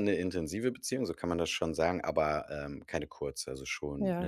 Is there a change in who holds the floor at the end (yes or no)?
yes